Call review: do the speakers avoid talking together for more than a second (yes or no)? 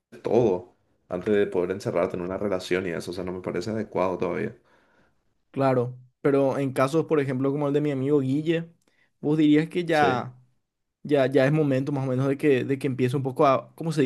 yes